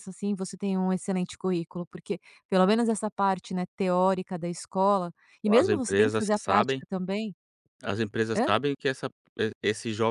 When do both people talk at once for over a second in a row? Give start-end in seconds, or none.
5.6-6.8